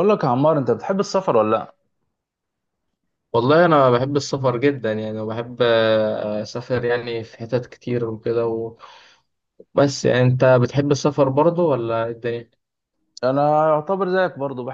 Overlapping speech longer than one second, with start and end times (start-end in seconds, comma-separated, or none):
none